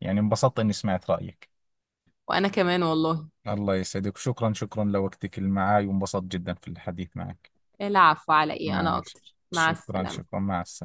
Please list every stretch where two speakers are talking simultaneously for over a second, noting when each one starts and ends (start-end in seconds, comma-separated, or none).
8.6-10.3